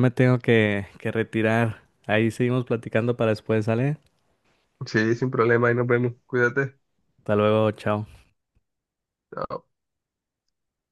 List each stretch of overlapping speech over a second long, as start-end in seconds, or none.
none